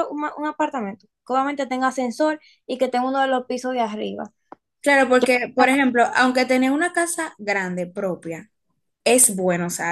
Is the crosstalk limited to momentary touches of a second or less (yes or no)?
yes